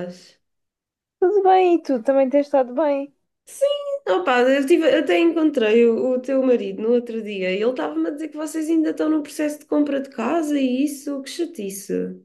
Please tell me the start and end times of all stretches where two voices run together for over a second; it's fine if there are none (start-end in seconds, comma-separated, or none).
none